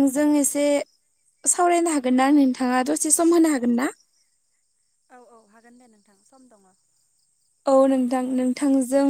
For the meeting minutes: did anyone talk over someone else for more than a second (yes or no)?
no